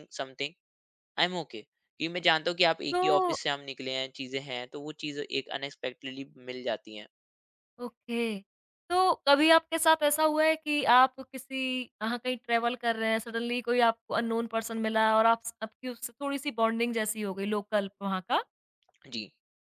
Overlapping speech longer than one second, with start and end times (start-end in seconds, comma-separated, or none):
none